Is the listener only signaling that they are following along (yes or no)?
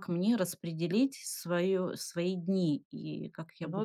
no